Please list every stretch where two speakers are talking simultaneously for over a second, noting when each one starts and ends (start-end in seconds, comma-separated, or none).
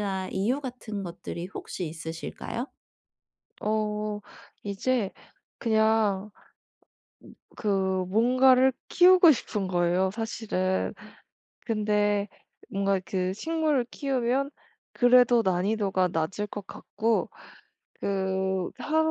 none